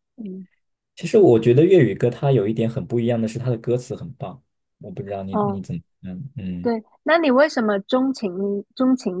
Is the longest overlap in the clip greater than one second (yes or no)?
no